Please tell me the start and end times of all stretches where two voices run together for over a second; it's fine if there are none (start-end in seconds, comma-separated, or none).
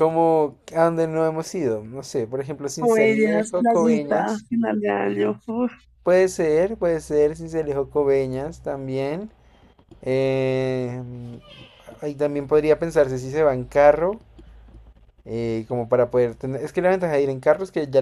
2.8-4.5